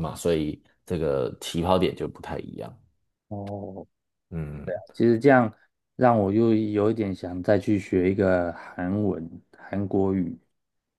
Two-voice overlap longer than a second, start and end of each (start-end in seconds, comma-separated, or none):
none